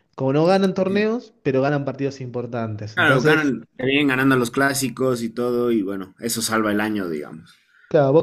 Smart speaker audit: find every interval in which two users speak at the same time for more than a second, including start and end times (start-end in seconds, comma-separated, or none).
none